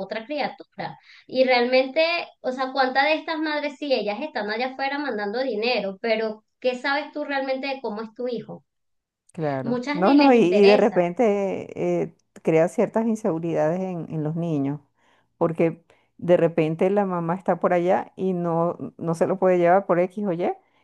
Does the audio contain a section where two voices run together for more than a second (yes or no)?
yes